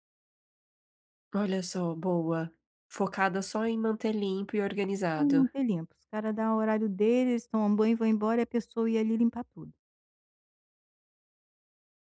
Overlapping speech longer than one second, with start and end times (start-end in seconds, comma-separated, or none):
none